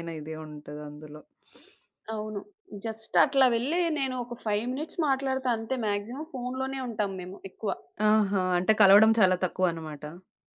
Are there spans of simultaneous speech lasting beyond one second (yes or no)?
no